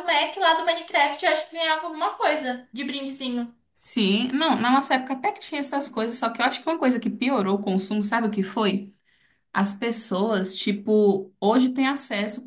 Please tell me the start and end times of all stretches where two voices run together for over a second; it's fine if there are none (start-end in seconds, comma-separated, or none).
none